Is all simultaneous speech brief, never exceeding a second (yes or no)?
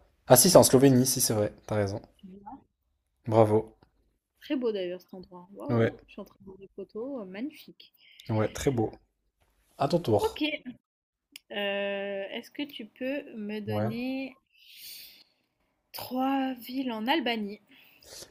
yes